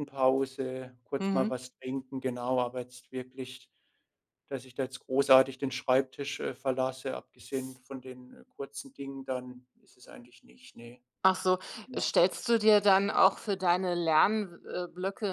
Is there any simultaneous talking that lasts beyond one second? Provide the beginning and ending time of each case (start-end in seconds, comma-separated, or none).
none